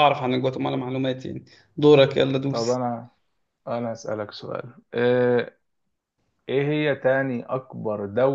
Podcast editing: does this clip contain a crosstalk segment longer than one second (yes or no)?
no